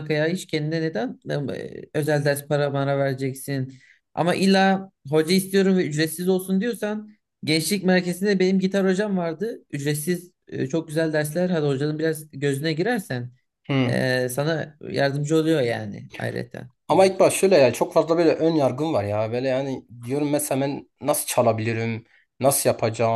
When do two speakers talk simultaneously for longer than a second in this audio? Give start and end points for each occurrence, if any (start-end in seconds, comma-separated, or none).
none